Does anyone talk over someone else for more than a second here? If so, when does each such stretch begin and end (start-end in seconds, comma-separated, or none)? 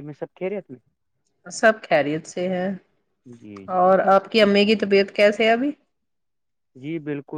none